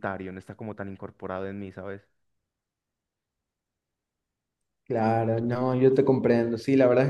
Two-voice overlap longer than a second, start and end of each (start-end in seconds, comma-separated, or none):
none